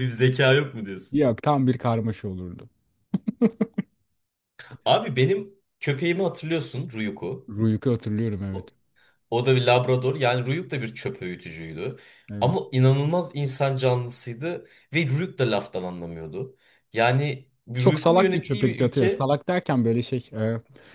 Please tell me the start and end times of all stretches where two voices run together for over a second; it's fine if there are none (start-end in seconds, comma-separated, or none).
17.8-19.2